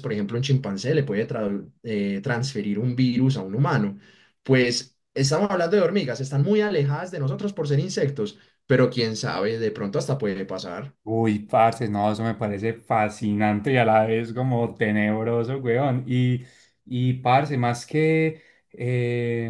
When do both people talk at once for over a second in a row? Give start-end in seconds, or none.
none